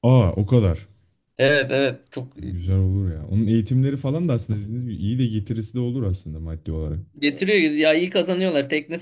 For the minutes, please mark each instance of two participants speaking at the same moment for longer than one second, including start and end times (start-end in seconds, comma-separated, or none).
none